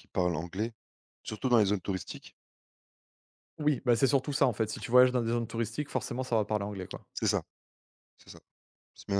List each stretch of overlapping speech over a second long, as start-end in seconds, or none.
none